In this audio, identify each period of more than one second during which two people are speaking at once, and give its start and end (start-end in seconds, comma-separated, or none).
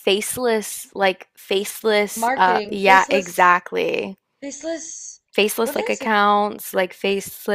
2.1-3.6